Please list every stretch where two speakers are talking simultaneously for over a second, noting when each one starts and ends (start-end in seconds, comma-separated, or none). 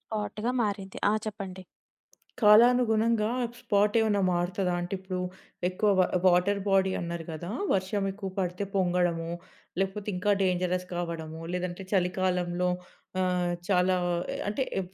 none